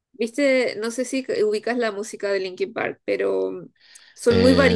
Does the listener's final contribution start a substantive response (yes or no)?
yes